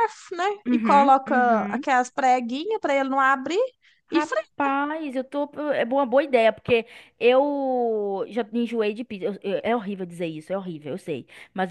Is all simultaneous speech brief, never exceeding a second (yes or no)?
no